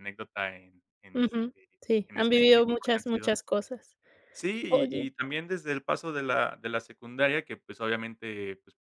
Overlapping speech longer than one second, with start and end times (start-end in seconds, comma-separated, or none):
1.1-3.3